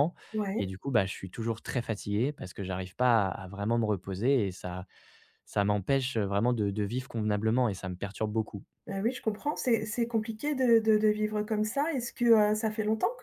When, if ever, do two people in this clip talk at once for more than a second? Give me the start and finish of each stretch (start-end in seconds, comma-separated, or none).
none